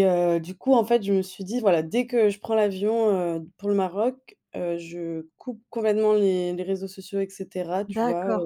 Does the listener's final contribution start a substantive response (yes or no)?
yes